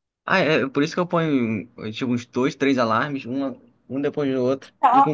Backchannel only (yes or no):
no